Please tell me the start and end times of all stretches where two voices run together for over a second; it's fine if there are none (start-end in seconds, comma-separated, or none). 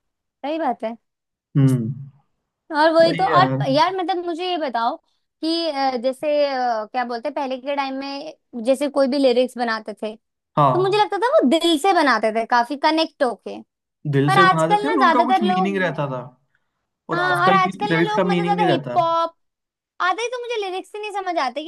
14.3-15.9, 17.1-19.0